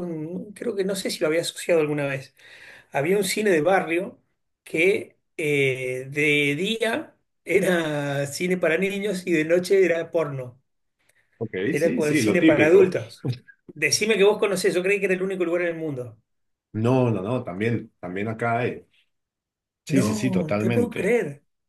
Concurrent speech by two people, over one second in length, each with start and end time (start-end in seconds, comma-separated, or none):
11.7-12.9, 19.9-21.2